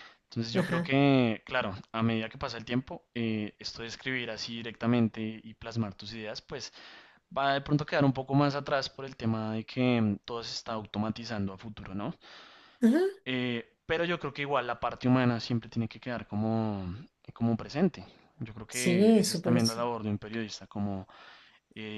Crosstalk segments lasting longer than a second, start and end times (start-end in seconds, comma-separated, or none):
18.7-19.9